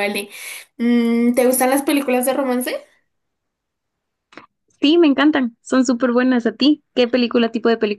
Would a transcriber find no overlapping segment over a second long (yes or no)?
yes